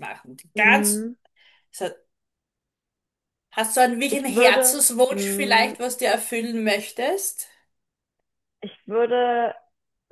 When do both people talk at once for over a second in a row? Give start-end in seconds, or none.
4.1-5.8